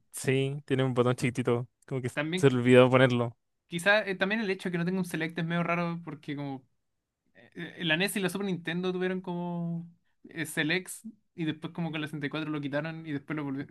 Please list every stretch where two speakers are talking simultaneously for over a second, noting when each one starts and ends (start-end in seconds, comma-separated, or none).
none